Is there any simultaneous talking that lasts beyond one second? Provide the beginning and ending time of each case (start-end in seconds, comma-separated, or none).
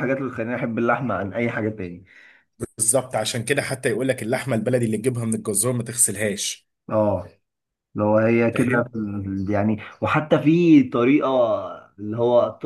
none